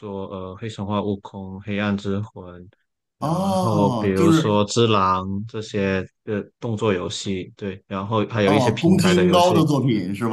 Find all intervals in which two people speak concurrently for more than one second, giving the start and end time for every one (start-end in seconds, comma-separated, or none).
3.2-4.6, 8.4-9.7